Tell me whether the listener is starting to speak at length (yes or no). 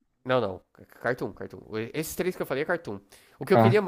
no